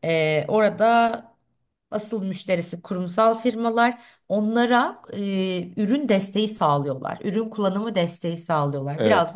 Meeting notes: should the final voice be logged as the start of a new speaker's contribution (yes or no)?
no